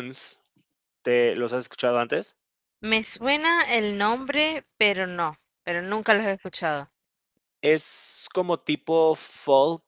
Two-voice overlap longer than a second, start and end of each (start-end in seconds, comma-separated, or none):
none